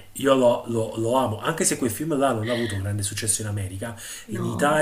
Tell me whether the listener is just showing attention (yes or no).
yes